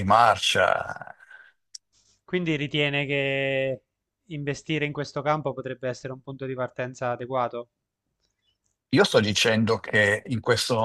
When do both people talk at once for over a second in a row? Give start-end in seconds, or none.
none